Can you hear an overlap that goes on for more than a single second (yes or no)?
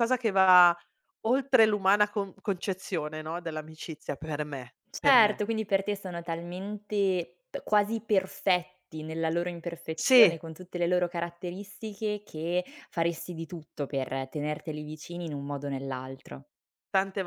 no